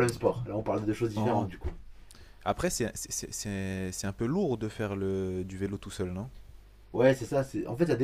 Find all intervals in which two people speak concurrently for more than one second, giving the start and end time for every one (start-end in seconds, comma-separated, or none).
none